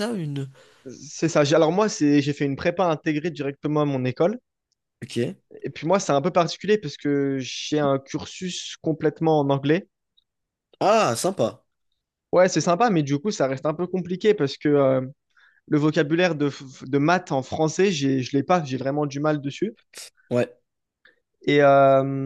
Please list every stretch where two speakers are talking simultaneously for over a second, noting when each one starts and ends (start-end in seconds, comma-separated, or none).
none